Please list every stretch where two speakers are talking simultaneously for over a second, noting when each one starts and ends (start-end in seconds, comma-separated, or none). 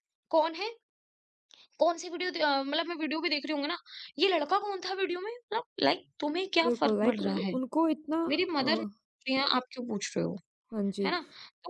none